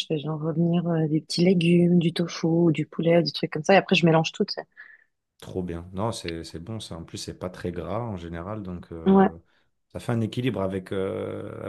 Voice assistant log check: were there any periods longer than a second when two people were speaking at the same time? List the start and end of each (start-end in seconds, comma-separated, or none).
none